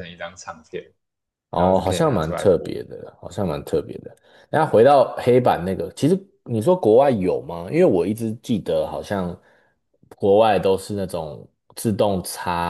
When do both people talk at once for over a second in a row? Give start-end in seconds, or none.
1.5-2.8